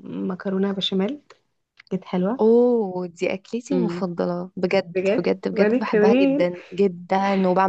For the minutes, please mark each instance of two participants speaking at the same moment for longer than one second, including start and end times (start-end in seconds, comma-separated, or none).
5.0-6.5